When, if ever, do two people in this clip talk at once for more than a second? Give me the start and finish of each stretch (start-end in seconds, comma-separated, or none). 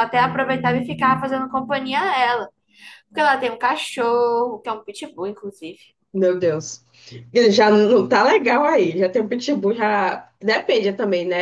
none